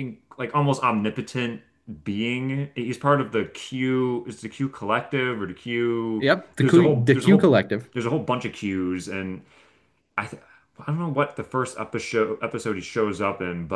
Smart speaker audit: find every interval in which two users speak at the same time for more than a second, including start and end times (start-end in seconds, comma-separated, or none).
6.2-7.5